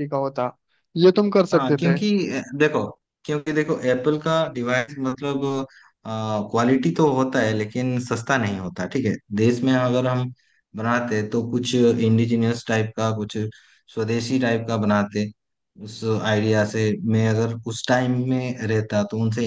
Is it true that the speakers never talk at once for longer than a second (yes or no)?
yes